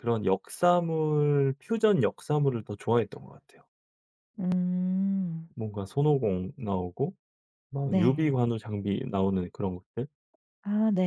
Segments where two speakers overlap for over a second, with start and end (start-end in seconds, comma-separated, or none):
none